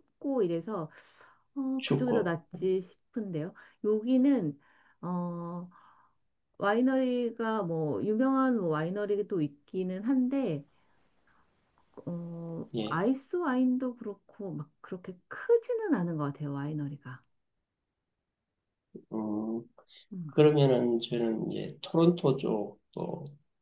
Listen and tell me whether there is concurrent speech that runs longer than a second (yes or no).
no